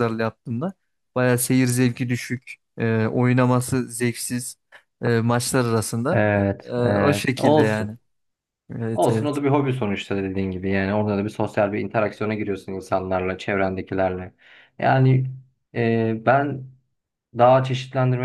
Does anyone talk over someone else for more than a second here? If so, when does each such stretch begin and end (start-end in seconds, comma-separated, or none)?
6.1-8.0